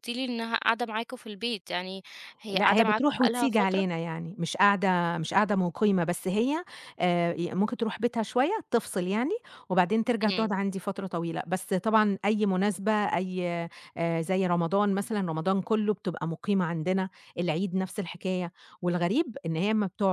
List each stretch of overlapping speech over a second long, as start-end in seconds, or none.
2.5-3.9